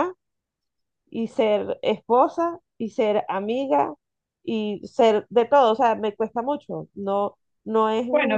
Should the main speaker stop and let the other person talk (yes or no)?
yes